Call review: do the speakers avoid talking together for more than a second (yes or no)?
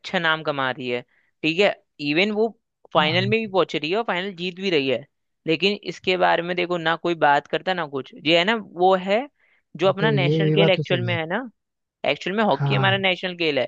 no